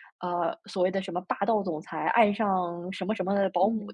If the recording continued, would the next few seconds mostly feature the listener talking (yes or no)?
no